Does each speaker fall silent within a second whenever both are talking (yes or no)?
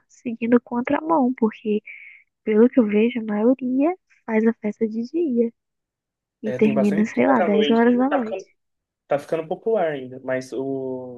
no